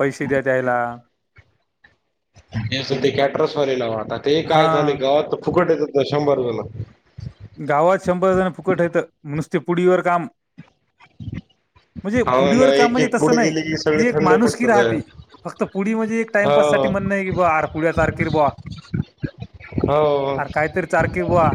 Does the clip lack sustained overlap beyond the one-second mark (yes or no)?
no